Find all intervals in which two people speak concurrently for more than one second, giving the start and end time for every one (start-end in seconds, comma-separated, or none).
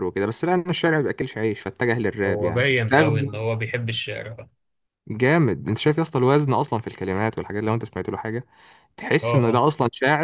2.2-3.5